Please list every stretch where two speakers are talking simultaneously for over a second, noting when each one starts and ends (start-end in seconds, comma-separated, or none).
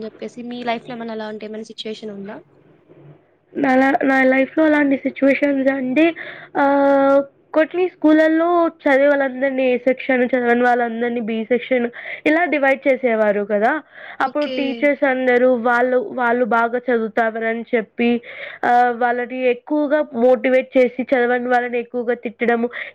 none